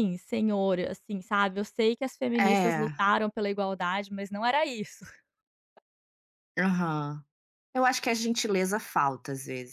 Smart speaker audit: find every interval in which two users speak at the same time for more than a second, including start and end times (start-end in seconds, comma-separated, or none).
none